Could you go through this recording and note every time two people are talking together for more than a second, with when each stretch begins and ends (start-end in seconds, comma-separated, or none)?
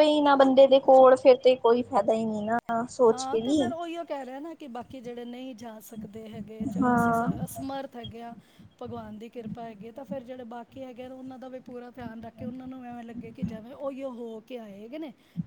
none